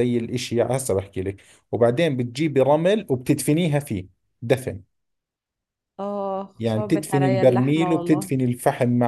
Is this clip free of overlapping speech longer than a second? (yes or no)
no